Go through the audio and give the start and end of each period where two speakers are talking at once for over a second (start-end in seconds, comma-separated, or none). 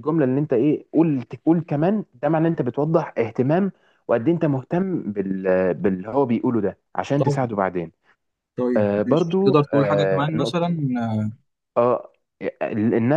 8.8-10.7